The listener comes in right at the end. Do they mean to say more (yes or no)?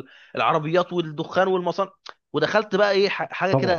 no